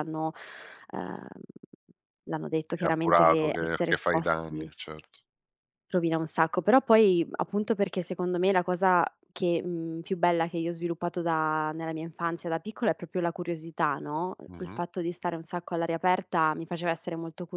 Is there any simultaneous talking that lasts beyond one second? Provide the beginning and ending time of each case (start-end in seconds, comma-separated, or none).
2.7-4.7